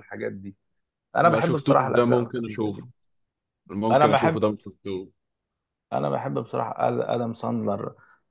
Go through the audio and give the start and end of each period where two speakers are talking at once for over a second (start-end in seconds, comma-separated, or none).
1.2-2.9